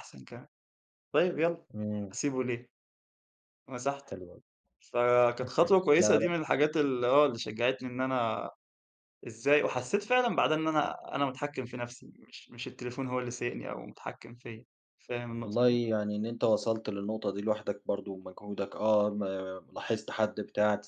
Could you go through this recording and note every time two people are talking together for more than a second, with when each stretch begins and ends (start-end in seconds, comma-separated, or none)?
none